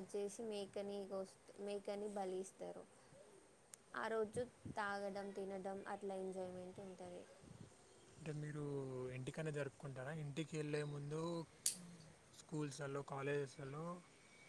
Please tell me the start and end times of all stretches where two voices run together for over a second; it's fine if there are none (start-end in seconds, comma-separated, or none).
none